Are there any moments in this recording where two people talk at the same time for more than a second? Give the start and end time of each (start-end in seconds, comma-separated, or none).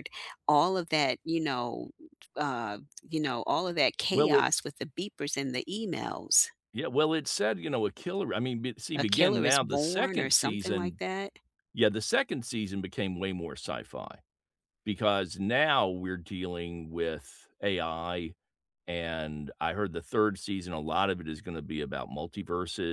8.9-11.0